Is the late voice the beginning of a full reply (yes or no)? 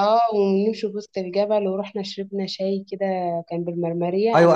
yes